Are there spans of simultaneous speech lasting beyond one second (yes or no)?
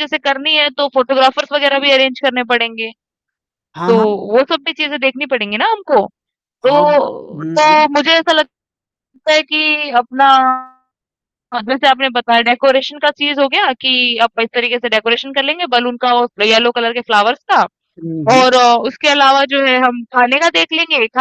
yes